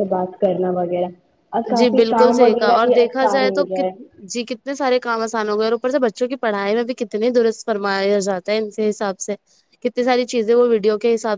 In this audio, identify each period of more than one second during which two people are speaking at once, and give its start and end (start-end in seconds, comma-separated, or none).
1.8-3.9